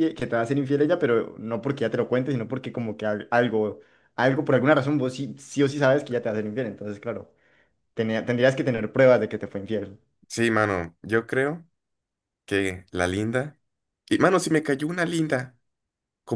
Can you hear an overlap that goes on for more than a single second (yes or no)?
no